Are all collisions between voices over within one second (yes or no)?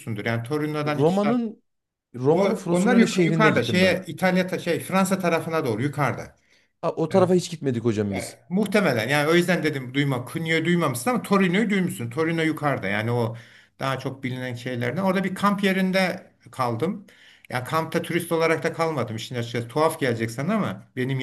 no